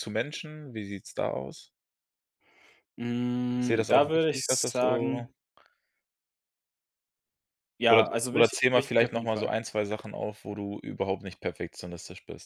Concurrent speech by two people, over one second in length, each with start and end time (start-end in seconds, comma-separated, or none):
3.6-5.3, 7.9-9.5